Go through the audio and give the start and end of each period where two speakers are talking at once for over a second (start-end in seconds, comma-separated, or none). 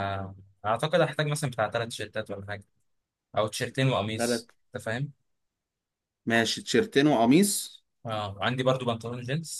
none